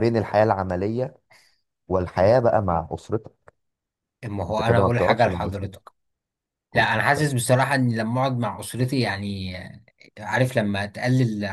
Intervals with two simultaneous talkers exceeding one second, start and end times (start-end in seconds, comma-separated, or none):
4.5-5.8